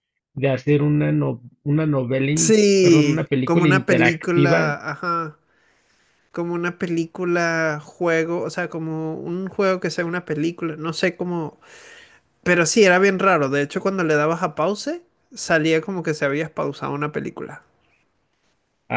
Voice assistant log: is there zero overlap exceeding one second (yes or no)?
no